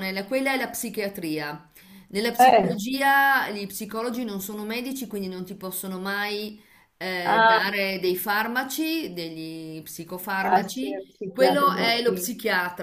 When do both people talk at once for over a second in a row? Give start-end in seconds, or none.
10.4-12.2